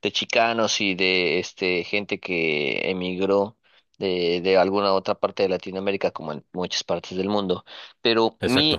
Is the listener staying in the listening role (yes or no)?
yes